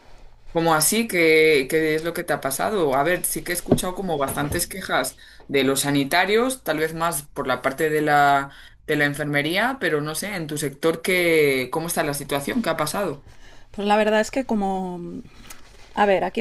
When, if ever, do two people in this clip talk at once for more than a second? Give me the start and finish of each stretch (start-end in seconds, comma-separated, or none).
none